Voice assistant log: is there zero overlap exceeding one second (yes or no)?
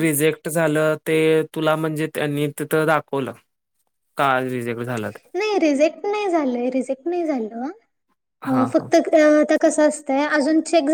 yes